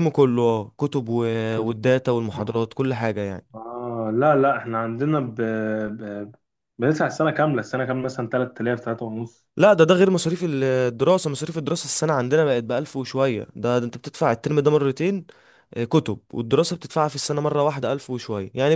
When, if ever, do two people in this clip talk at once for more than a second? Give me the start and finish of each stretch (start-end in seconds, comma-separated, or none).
none